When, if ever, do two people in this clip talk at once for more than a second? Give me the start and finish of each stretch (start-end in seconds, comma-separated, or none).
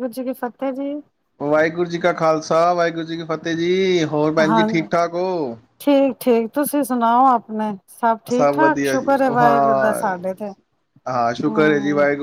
8.3-10.1